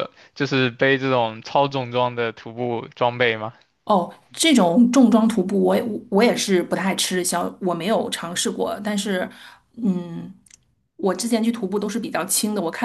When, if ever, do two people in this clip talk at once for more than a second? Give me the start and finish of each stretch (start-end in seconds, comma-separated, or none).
none